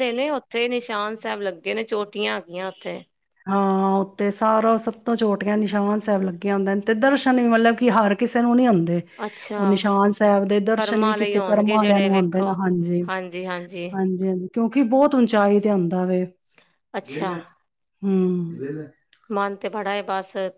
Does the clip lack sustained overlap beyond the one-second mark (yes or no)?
no